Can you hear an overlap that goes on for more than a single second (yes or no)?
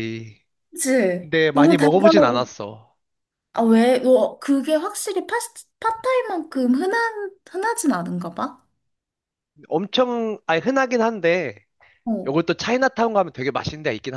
yes